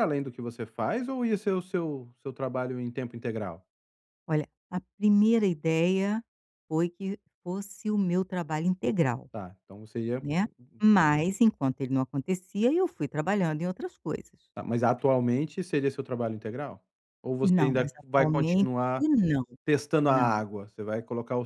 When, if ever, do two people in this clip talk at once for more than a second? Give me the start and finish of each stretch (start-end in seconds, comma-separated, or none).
17.6-19.0